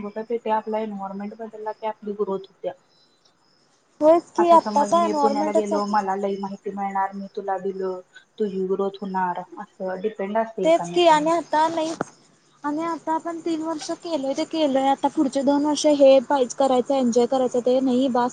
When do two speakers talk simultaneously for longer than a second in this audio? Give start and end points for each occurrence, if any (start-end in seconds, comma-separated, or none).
4.4-5.9